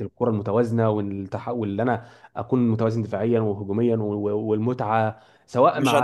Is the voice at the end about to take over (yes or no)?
yes